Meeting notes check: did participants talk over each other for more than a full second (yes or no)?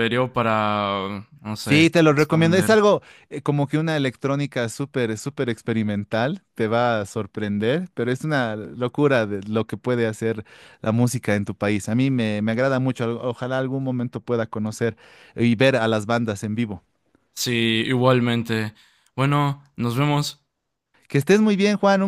yes